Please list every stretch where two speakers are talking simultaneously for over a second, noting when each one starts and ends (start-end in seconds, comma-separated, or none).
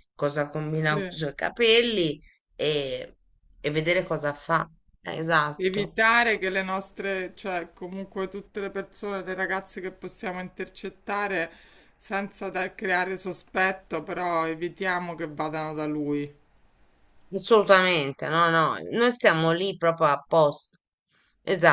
none